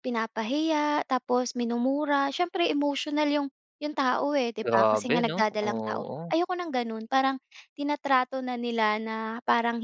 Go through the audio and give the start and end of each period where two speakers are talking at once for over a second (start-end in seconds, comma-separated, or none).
4.6-6.3